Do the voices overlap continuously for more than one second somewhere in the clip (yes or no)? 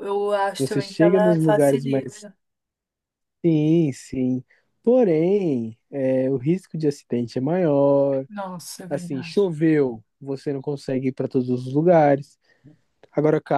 yes